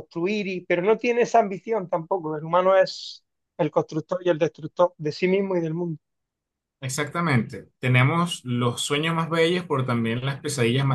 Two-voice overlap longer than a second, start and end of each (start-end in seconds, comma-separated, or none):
none